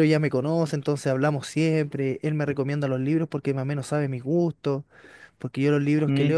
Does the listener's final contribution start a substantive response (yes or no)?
no